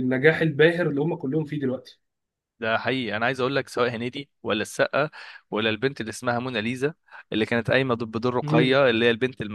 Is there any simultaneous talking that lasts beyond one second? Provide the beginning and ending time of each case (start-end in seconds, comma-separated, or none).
none